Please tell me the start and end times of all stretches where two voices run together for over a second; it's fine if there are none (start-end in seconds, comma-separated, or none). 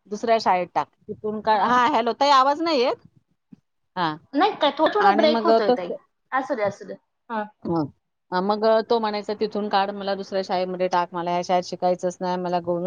none